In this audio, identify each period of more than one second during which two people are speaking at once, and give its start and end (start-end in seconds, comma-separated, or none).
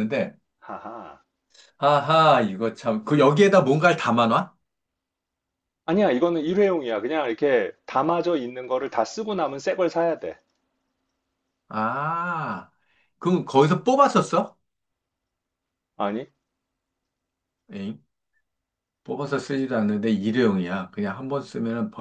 none